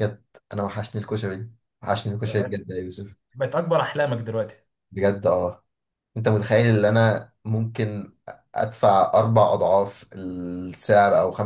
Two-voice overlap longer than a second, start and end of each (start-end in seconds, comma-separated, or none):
none